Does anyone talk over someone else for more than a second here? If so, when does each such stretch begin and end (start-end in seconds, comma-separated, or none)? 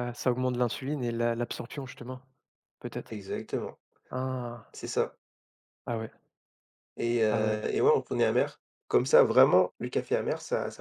none